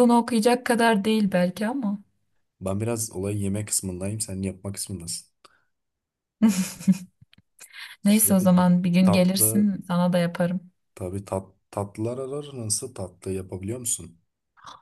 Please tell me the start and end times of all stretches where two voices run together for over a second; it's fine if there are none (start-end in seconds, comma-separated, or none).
8.0-9.7